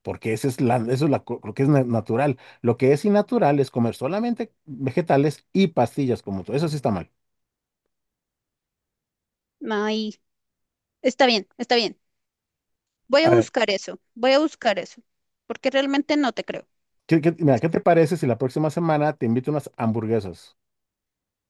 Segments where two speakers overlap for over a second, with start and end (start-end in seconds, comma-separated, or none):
none